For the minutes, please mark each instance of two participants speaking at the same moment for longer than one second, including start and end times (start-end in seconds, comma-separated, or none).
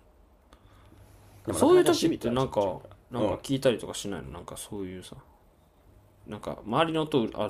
1.5-3.4